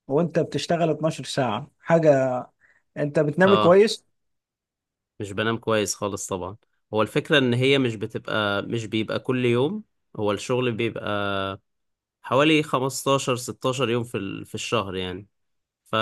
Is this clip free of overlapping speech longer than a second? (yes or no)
yes